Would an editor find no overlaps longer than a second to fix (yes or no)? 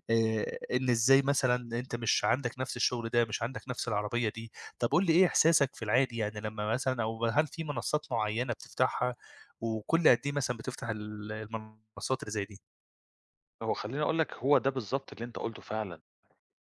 yes